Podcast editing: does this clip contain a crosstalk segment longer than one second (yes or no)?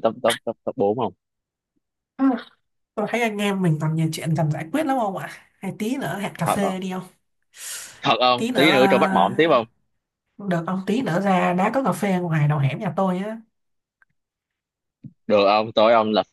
yes